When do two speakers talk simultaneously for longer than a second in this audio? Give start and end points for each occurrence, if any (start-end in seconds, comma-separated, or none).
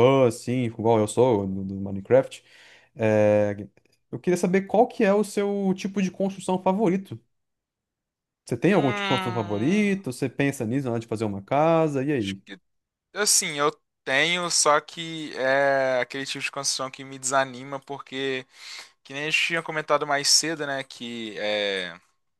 8.7-10.0